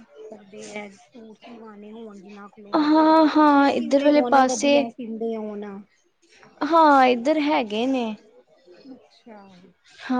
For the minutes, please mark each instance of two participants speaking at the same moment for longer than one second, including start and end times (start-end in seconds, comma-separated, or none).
3.3-4.8